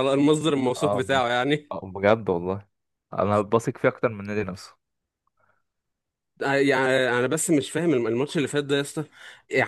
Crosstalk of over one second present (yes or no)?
no